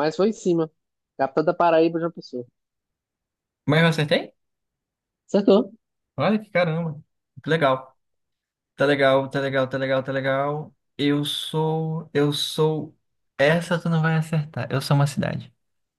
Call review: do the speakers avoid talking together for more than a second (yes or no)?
yes